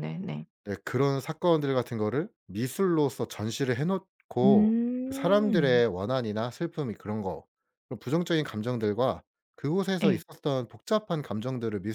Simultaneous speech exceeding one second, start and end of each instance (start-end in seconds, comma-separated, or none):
4.4-5.8